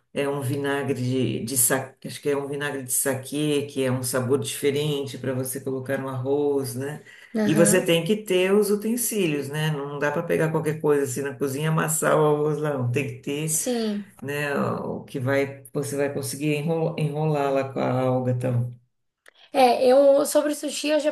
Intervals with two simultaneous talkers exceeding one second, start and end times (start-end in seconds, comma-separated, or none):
none